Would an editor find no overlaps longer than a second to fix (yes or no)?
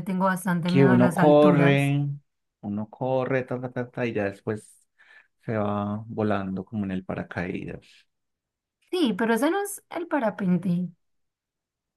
no